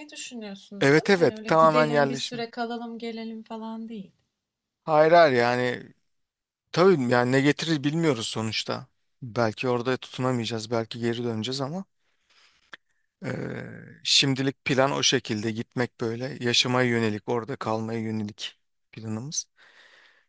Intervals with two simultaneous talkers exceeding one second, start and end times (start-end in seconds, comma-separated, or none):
0.8-2.5